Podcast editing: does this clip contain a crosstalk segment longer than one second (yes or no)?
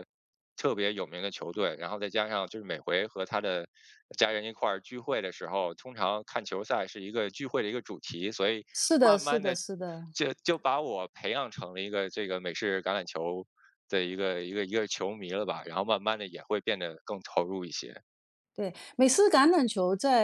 no